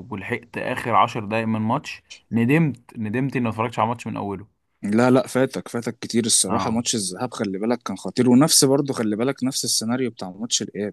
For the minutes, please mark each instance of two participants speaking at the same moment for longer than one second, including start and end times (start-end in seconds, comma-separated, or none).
none